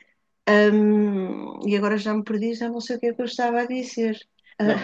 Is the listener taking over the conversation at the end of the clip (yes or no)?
yes